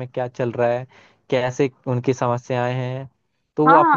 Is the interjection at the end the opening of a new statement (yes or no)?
yes